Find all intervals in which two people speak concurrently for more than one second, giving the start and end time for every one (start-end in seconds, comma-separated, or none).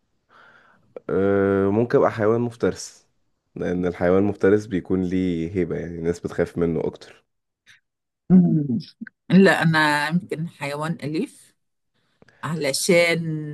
none